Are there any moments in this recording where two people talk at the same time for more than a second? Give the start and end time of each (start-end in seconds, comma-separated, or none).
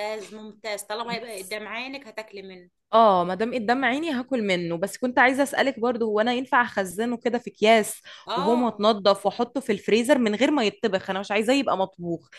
none